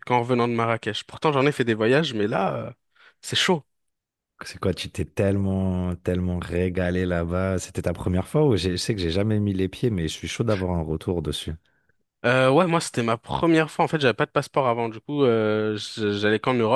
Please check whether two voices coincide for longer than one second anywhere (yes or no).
no